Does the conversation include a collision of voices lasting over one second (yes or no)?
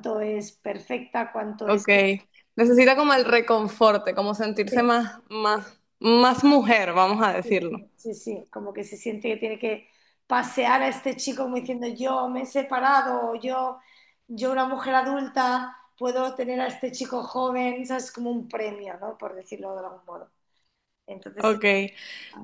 no